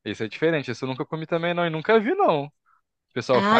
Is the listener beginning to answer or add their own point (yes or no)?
yes